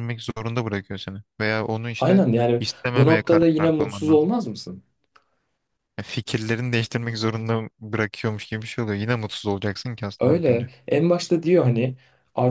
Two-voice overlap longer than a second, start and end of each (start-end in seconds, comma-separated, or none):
2.0-4.3